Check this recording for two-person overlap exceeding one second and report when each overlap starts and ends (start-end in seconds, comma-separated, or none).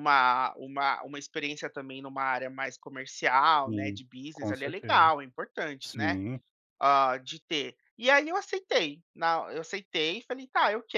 3.5-5.1